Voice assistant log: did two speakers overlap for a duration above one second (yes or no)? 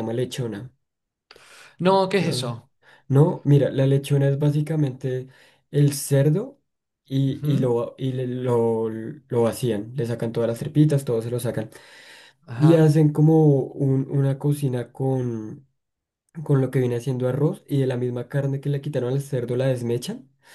no